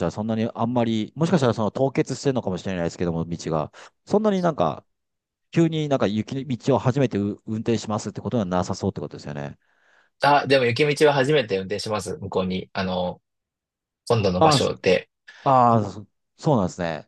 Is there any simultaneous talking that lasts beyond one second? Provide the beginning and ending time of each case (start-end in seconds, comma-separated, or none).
none